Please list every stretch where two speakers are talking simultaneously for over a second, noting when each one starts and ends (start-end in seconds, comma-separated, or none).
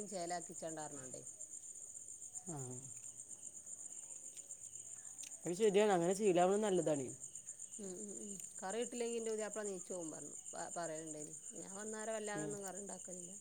none